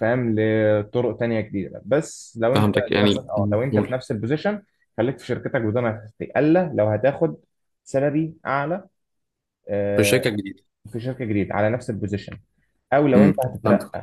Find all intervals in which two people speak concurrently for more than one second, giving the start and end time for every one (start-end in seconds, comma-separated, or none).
2.5-4.0